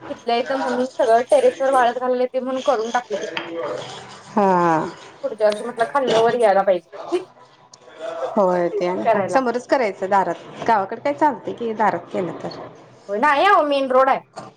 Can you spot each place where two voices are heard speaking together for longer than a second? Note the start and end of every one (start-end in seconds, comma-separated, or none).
none